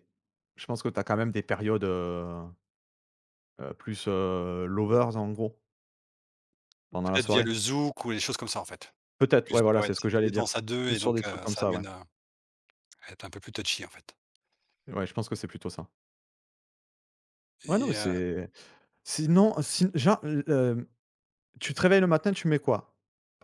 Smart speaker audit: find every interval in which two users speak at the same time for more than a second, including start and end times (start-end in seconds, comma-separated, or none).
9.3-11.8